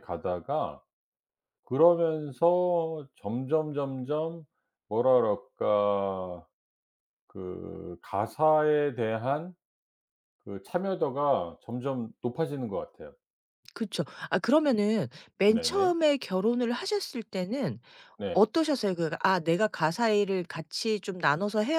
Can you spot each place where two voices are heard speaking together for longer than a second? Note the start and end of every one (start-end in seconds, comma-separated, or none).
none